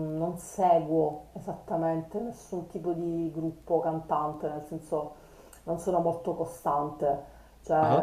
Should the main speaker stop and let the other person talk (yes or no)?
no